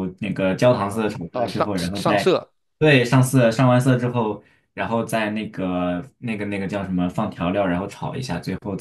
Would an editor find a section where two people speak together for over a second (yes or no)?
yes